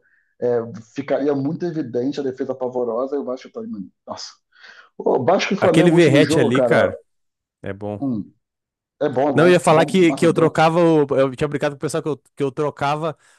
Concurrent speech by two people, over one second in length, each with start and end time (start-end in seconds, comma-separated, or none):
5.6-6.9, 9.3-10.6